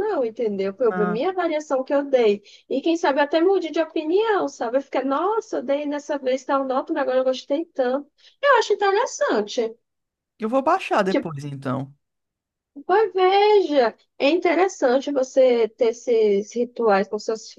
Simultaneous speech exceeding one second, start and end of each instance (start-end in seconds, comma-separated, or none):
none